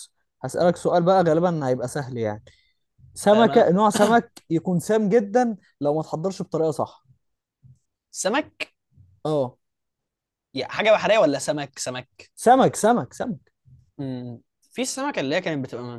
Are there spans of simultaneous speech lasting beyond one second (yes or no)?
no